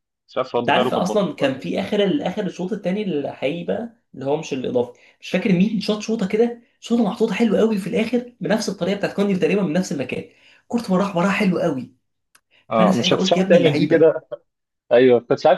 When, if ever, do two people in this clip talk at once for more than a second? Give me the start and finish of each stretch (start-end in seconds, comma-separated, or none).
0.6-1.9, 12.7-14.1